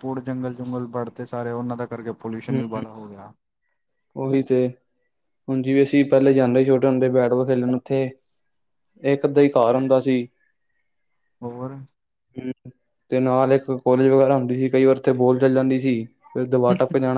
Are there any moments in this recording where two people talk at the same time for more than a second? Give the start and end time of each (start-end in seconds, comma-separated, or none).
none